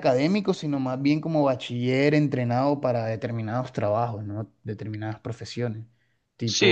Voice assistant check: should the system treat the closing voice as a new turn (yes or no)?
yes